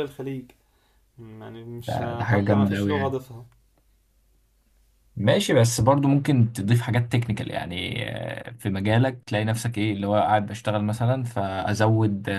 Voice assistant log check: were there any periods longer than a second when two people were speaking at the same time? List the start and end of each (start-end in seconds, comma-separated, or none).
1.9-3.2